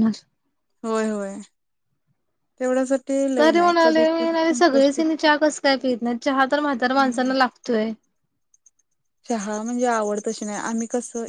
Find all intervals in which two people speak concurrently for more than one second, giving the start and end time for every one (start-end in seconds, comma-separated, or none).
3.4-5.0